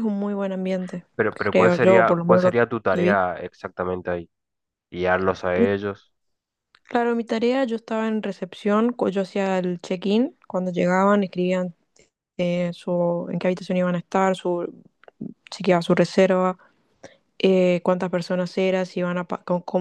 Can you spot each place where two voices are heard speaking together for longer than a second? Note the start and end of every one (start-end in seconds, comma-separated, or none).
1.5-3.2